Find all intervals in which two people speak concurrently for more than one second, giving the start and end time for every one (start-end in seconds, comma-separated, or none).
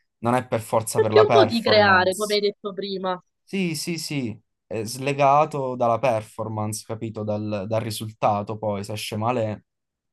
0.9-2.4